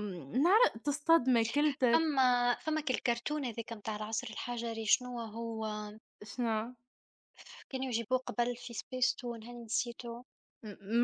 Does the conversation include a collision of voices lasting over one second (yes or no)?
no